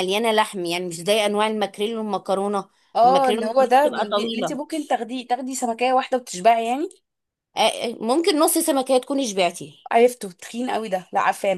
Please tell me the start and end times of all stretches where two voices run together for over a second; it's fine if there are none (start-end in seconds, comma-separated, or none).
3.0-4.6